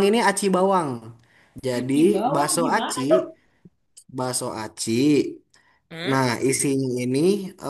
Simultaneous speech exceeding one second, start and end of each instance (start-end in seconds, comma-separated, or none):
1.7-3.2